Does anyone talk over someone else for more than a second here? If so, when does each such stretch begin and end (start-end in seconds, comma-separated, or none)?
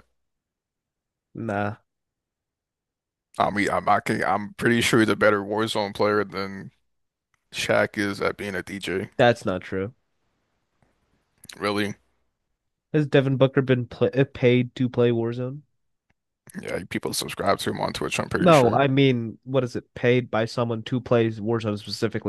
none